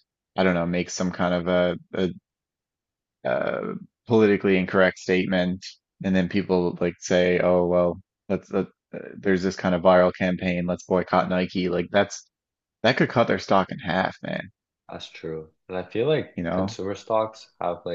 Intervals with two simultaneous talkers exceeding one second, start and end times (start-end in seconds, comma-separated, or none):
none